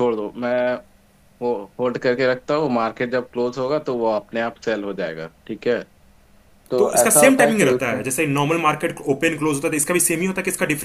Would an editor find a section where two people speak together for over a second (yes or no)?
yes